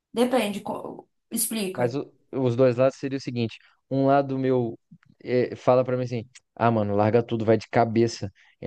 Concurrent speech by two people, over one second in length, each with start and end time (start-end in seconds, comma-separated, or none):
none